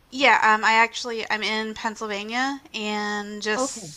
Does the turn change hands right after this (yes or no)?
no